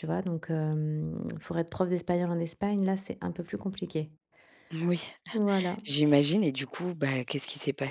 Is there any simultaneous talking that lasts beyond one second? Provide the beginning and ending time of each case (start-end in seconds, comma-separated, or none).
none